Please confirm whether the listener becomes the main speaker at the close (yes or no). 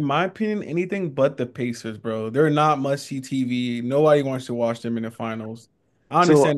yes